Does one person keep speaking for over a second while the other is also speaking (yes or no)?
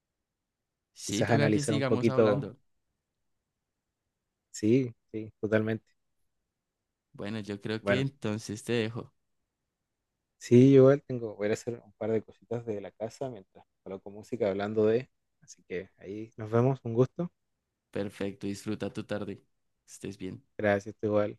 yes